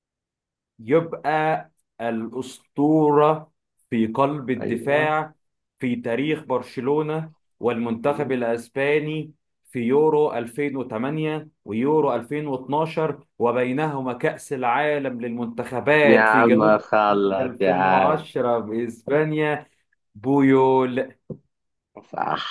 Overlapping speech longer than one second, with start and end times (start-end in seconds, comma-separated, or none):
16.1-18.2